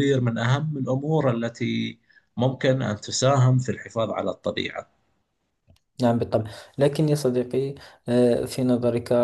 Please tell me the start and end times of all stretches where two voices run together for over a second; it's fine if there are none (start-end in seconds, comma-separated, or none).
none